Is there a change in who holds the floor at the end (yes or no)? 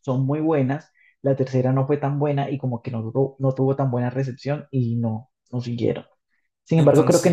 no